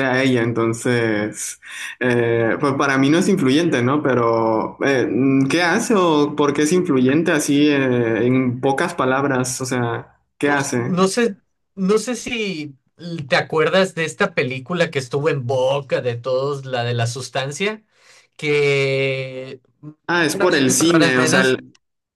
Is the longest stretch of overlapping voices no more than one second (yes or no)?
no